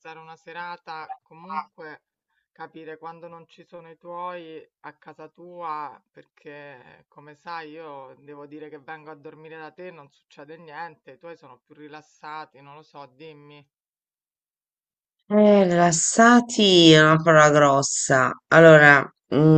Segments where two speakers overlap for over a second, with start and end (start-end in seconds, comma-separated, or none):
none